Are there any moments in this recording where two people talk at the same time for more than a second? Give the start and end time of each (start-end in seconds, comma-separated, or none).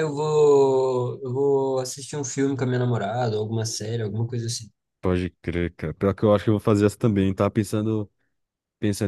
none